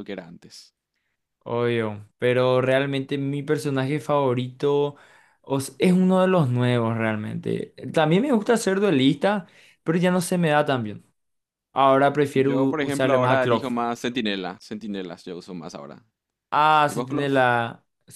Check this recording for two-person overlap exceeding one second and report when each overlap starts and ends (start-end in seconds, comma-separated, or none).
12.3-13.7